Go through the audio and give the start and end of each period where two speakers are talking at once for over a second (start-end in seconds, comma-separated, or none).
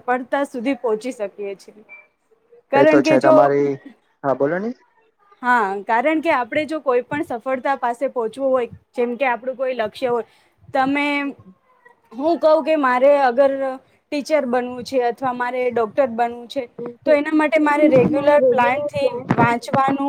17.7-19.6